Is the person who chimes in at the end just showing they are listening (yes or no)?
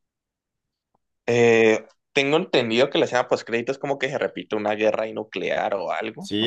no